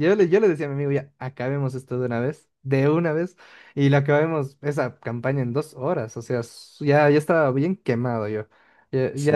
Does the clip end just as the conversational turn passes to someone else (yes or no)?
no